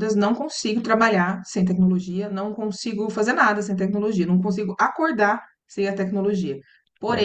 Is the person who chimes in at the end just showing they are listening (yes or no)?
yes